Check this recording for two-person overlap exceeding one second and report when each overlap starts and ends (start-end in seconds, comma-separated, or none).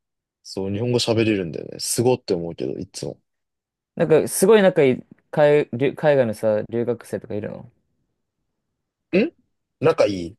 none